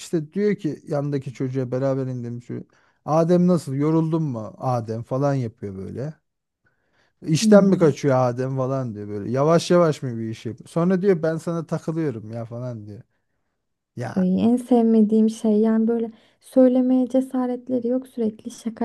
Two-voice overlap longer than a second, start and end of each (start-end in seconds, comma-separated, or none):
none